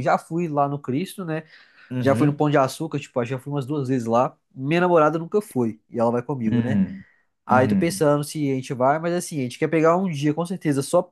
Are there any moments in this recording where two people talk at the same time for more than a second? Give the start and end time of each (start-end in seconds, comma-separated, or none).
none